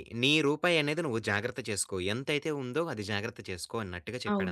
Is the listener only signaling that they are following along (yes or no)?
no